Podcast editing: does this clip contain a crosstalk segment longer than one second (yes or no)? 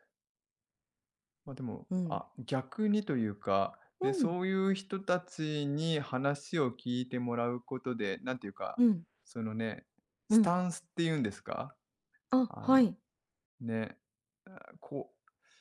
no